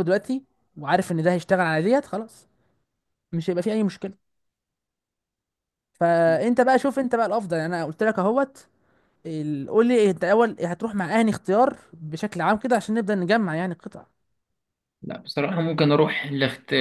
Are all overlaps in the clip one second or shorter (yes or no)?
yes